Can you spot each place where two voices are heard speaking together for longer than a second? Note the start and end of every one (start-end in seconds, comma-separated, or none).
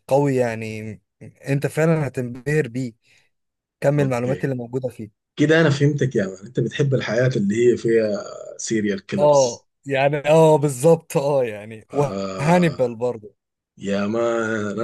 none